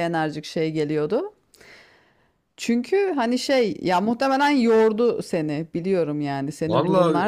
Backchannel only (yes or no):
no